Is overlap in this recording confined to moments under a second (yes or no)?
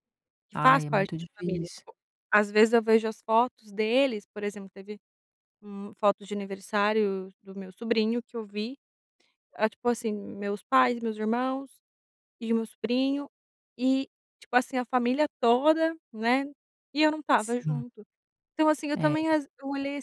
no